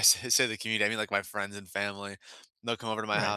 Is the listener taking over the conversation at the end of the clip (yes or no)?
no